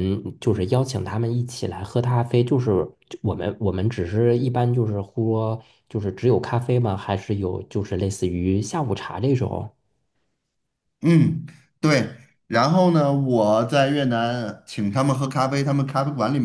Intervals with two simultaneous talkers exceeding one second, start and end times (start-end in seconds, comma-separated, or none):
none